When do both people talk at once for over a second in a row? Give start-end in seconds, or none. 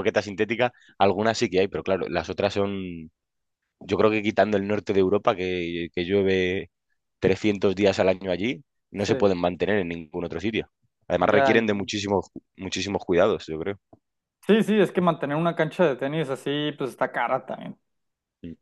none